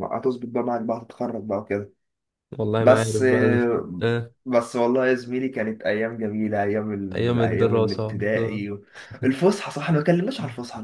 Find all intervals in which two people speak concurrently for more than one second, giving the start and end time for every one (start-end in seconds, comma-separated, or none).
7.1-8.6